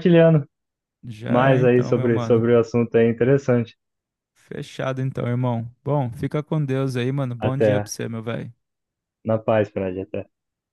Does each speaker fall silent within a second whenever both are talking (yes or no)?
no